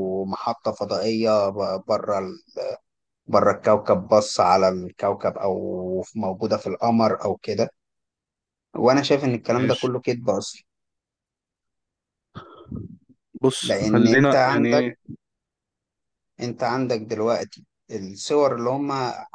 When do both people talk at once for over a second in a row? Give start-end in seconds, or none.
13.6-14.9